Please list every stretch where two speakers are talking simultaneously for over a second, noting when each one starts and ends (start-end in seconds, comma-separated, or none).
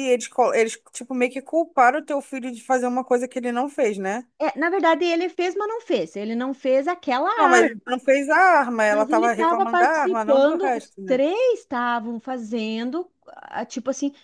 8.9-11.2